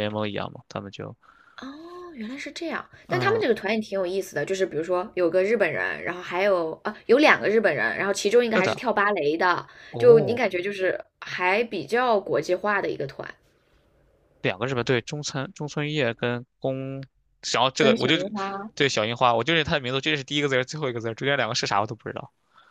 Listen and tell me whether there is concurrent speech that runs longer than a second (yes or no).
no